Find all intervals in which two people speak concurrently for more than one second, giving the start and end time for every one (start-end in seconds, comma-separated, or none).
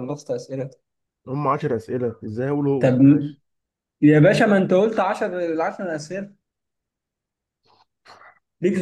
none